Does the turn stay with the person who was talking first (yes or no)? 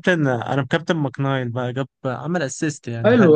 no